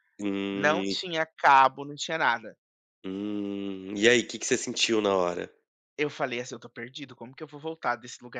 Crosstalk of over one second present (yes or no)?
no